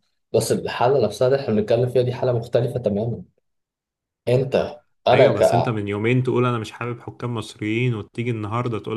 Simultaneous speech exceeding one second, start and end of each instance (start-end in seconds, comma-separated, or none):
none